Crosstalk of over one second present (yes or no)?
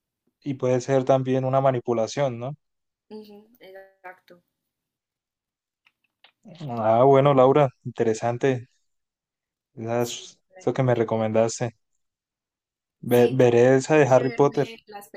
yes